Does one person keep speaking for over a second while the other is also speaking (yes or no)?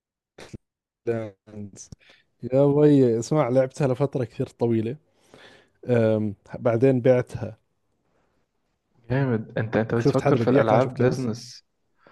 yes